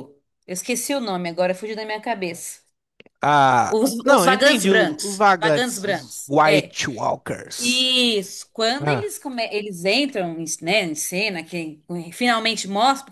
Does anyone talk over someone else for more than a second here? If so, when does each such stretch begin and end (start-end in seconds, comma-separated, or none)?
3.7-6.8